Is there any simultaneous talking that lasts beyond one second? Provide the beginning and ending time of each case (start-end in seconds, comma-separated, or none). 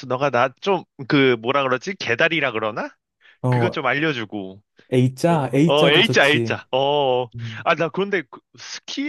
5.3-6.6